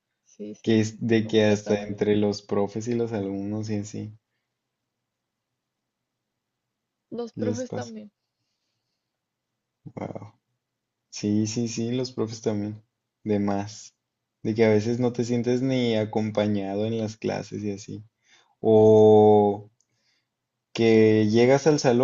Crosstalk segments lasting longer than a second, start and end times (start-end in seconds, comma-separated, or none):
0.6-2.0